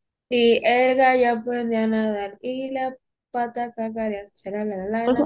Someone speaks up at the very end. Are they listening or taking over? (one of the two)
taking over